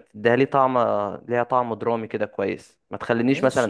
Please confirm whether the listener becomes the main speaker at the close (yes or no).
yes